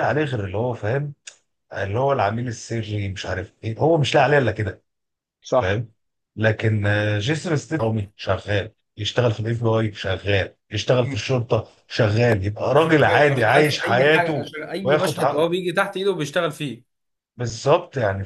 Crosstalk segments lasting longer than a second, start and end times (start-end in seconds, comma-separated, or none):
13.1-14.4